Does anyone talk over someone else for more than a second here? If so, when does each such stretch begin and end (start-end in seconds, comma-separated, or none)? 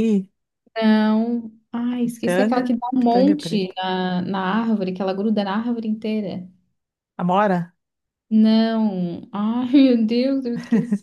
2.0-3.8